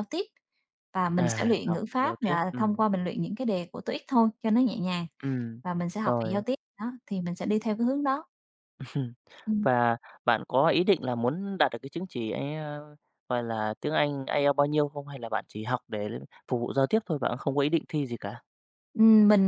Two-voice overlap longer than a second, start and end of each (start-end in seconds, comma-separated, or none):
1.2-2.8